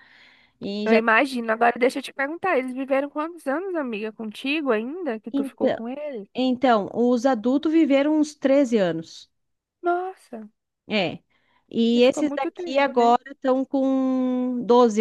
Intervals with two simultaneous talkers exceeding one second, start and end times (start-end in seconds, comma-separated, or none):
11.9-13.1